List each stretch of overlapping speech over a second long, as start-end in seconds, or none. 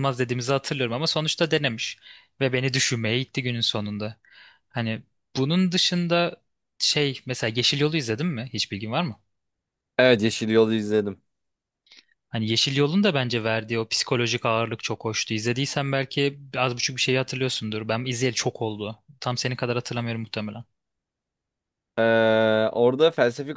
none